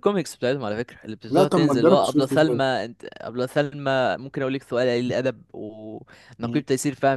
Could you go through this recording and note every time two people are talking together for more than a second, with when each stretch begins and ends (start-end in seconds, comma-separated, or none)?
1.3-2.6